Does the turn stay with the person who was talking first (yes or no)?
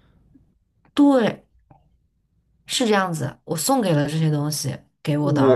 no